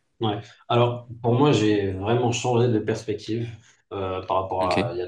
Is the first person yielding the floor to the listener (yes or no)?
no